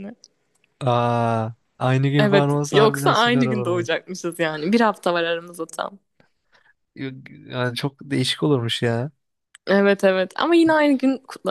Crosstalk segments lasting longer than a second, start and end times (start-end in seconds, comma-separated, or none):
2.2-4.0